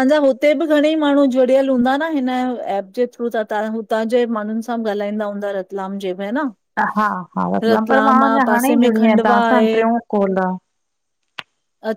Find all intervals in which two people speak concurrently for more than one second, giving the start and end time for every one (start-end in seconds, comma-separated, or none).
7.6-9.7